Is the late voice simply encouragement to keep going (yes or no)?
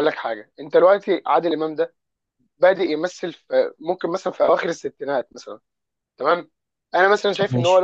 yes